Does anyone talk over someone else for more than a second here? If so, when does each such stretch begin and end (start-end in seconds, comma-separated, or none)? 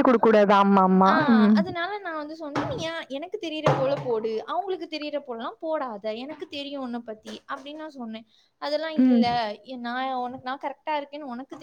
none